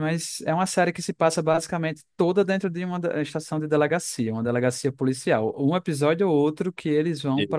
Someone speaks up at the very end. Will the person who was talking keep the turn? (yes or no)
yes